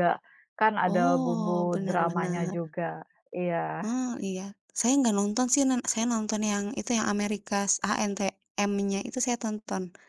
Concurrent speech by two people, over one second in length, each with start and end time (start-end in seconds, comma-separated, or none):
0.9-2.6